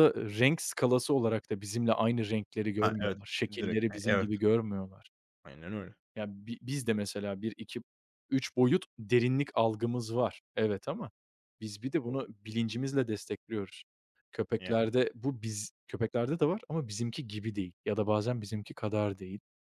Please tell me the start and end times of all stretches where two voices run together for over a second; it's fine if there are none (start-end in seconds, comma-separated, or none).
2.8-4.3